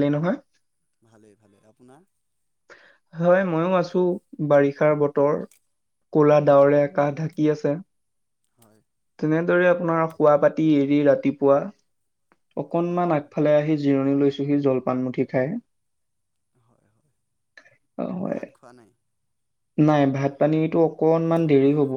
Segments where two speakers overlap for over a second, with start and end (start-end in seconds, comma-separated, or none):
none